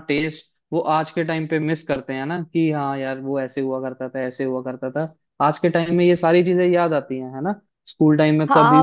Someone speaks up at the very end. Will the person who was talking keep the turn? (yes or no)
no